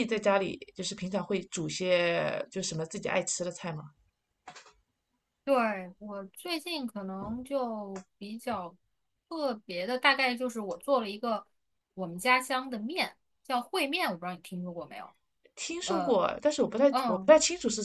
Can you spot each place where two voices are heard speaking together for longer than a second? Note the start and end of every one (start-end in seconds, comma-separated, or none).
none